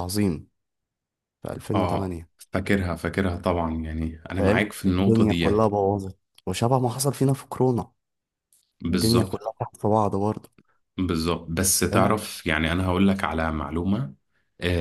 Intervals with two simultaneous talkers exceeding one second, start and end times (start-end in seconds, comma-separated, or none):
4.3-5.7